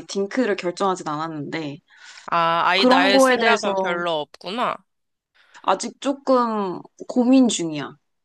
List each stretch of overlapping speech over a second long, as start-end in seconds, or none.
2.8-4.0